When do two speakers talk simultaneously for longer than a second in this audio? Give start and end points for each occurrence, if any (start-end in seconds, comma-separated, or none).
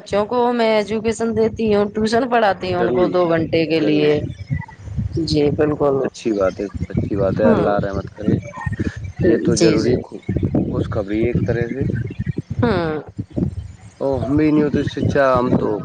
2.8-4.2